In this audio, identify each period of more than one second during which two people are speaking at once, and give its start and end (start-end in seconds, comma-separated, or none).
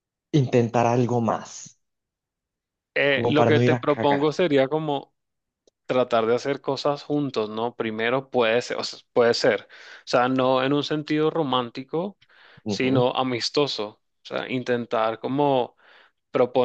3.1-4.3